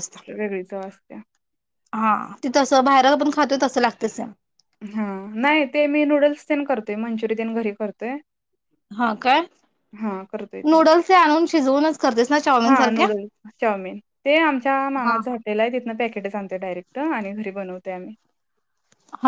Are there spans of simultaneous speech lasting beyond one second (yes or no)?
no